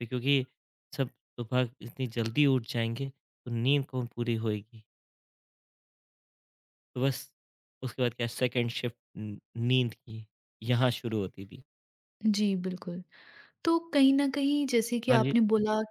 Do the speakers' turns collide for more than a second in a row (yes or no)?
no